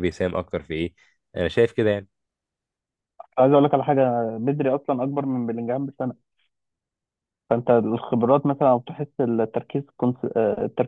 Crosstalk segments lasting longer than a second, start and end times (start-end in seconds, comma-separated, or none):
none